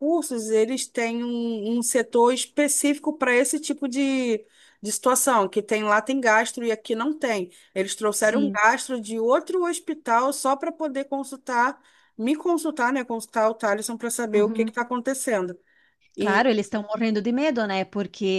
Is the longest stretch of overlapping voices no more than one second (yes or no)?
yes